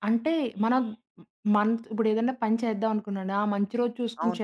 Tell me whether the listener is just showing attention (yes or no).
yes